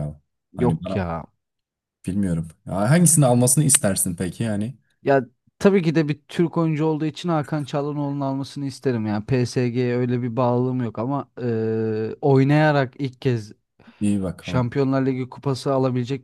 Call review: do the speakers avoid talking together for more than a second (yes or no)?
yes